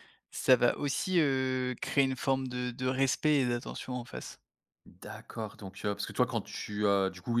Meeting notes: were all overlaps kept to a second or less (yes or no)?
yes